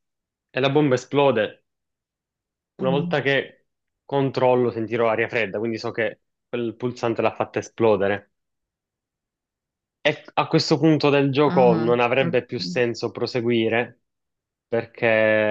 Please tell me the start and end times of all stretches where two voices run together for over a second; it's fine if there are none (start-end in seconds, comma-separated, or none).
11.5-12.8